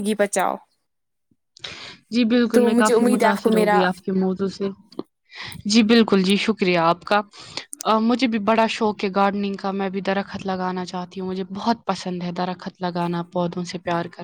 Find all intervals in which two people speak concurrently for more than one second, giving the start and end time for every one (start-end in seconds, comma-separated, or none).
2.5-3.8